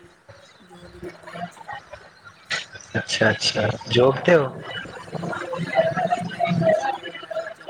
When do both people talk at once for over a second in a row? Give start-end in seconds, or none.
none